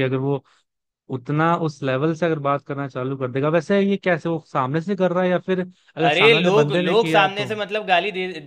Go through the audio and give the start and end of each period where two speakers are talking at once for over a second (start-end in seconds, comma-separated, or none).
6.1-7.5